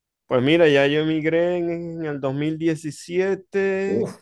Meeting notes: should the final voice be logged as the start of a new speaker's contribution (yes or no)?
no